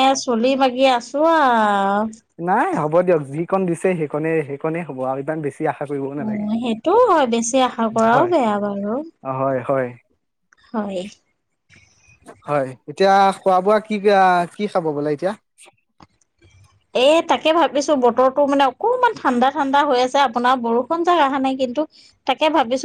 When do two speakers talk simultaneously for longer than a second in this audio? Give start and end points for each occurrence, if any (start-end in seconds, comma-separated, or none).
none